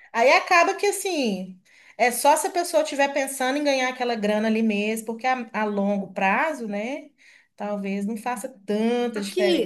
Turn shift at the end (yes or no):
yes